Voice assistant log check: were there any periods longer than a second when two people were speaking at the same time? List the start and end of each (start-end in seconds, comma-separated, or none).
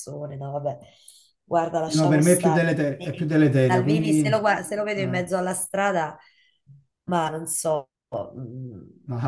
1.9-4.2